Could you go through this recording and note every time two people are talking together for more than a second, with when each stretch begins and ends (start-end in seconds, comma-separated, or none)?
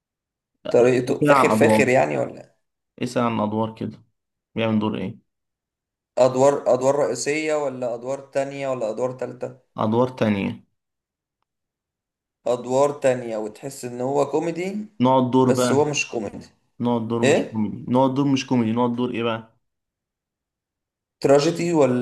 0.7-1.9